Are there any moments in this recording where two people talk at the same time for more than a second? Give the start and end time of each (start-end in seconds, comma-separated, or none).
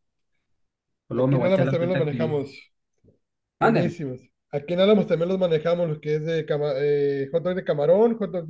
1.1-2.4